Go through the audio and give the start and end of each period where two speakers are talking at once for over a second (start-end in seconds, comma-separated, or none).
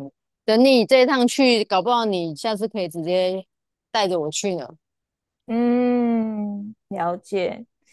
none